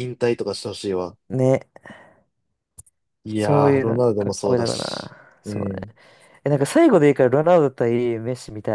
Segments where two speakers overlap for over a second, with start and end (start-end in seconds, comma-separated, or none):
3.3-5.8